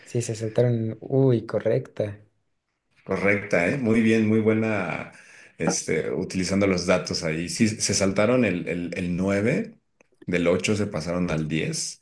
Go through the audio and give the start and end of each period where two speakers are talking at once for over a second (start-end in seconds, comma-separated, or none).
none